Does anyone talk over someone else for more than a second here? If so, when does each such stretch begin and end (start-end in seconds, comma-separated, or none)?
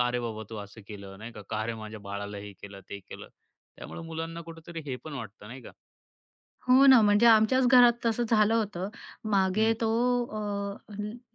none